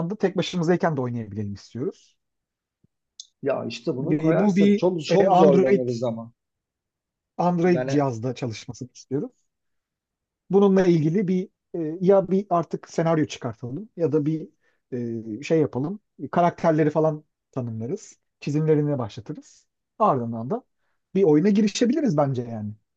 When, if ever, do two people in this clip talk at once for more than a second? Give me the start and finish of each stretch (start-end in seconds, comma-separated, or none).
4.1-5.8